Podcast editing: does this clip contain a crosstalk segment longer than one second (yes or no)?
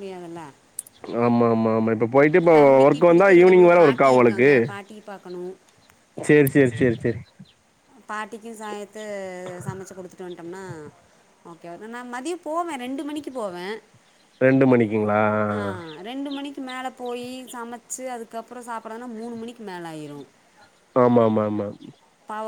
yes